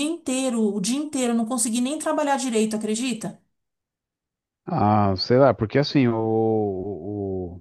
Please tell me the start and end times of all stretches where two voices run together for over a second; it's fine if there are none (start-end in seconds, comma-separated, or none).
none